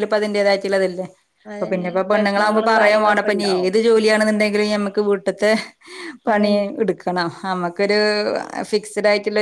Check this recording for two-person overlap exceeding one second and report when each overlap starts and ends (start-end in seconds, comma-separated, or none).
1.5-3.7